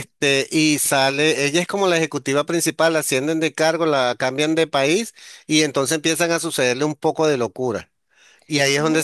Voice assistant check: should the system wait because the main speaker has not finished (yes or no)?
yes